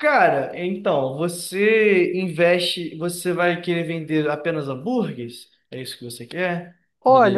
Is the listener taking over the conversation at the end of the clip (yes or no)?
yes